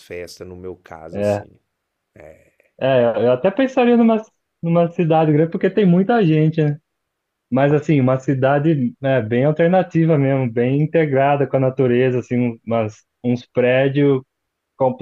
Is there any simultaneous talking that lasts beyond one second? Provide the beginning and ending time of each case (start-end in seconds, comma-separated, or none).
none